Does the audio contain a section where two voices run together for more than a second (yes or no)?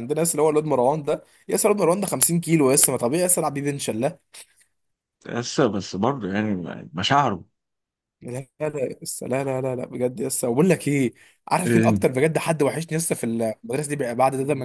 no